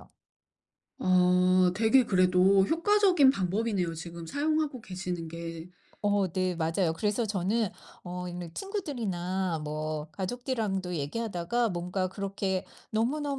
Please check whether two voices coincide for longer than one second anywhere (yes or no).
no